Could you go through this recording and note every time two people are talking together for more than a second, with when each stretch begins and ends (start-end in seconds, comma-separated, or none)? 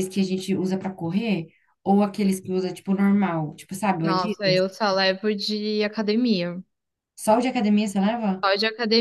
none